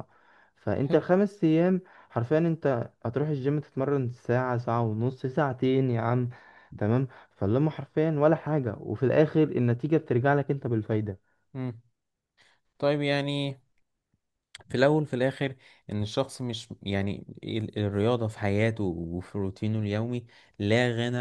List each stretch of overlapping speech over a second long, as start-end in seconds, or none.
none